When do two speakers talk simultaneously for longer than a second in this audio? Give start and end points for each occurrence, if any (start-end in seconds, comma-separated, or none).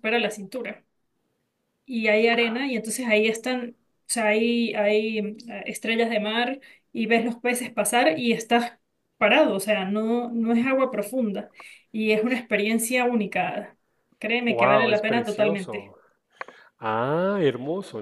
14.5-15.9